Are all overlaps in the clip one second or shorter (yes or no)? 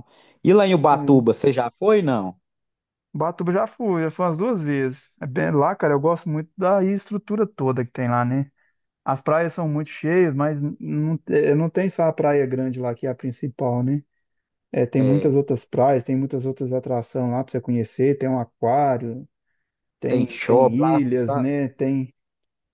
no